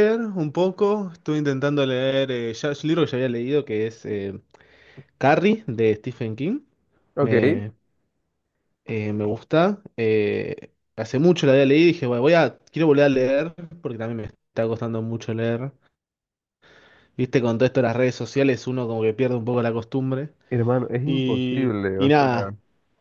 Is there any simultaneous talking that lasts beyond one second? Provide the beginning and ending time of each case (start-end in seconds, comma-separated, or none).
21.1-22.5